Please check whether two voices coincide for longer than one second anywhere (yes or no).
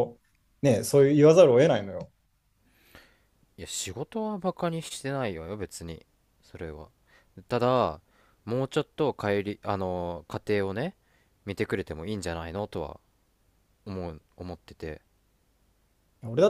no